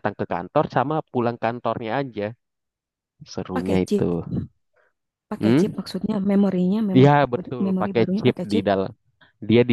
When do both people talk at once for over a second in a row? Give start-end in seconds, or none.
6.9-8.6